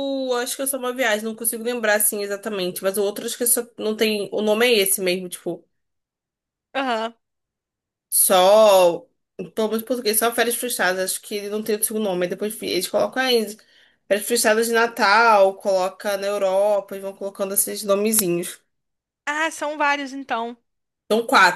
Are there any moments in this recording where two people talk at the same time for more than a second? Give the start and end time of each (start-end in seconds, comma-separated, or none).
none